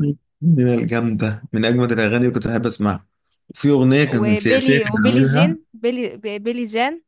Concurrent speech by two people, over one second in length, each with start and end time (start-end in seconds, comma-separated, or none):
4.1-5.6